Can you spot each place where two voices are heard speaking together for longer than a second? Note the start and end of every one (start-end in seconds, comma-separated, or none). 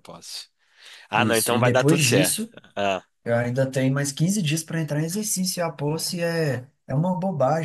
1.1-2.5